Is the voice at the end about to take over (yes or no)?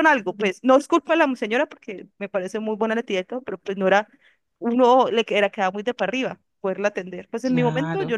no